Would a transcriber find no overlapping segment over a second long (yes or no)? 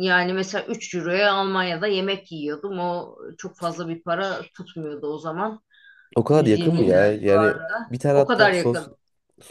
no